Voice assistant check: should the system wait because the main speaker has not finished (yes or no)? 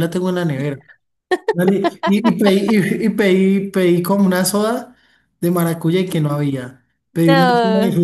yes